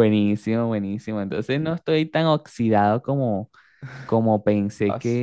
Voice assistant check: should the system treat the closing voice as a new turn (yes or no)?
no